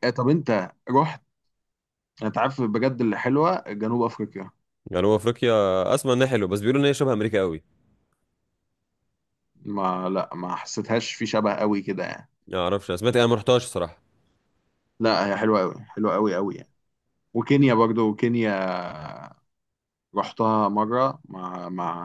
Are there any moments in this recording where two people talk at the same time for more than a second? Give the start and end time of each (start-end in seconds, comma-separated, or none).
none